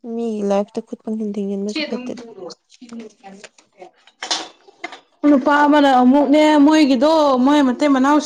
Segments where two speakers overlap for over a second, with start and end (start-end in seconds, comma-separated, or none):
none